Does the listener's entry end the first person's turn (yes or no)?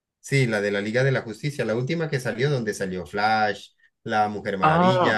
yes